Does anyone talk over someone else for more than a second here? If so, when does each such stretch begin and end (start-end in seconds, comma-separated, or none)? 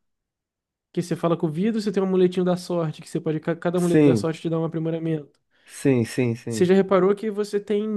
none